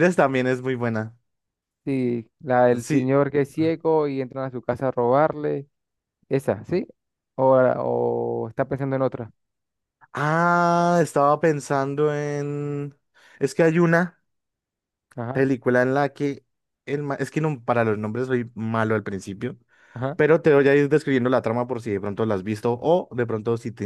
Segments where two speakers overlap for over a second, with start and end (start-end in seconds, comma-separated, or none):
none